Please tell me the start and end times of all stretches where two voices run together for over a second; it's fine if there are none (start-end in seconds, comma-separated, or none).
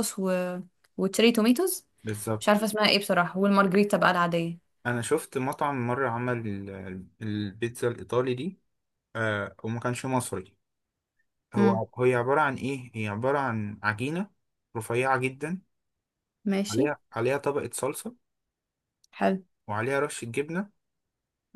none